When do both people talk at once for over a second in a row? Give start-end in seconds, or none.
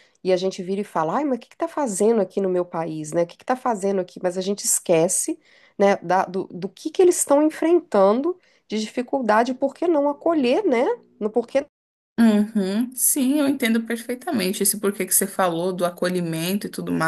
none